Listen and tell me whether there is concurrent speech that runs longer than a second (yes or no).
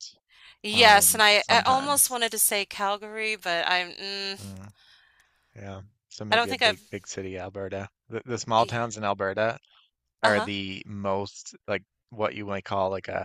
yes